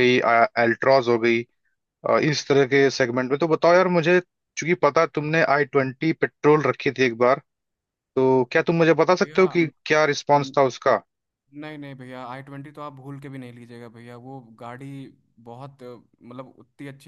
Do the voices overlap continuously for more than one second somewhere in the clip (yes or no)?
no